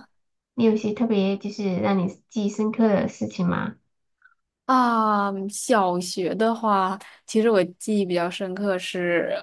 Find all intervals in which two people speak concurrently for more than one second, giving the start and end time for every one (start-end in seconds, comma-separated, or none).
none